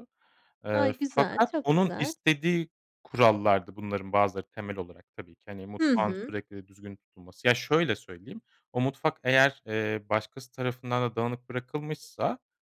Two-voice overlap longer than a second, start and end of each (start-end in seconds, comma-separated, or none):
0.7-2.1